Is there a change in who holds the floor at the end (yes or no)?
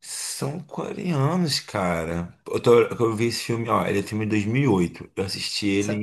yes